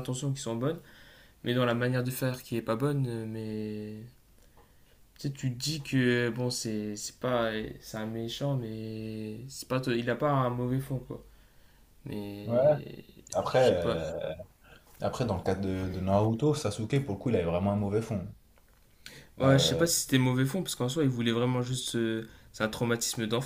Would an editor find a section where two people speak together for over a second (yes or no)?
no